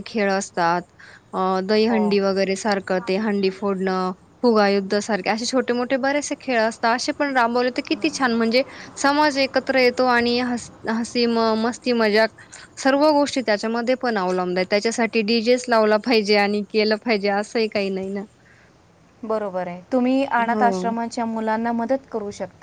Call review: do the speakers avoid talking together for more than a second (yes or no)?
yes